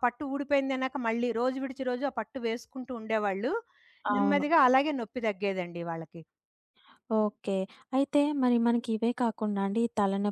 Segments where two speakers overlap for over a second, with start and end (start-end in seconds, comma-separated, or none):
none